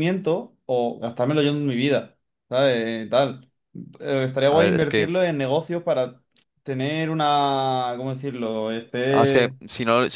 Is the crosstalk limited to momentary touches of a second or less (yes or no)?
yes